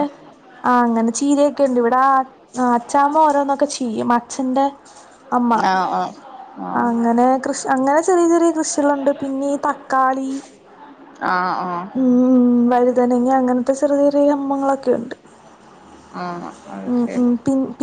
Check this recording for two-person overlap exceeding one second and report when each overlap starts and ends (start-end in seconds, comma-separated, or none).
none